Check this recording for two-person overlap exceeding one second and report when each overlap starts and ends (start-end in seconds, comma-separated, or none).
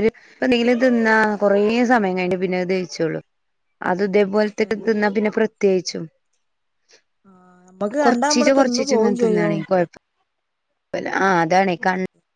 8.1-9.6